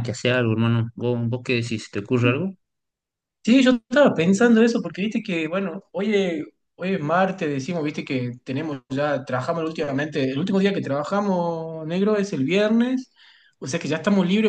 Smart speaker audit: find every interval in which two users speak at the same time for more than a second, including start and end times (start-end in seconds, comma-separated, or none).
none